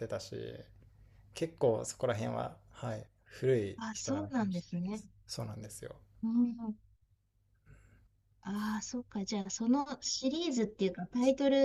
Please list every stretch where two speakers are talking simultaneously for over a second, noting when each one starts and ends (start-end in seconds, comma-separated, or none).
3.8-5.0